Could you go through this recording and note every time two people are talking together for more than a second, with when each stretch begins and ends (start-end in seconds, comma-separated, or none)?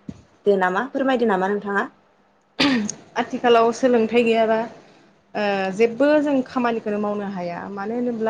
none